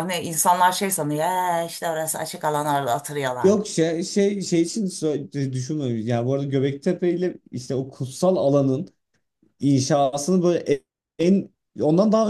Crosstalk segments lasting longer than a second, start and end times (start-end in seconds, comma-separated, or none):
none